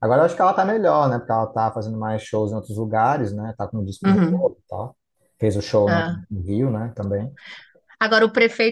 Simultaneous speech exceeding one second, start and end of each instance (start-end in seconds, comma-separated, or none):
none